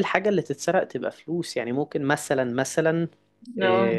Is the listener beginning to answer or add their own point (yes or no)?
no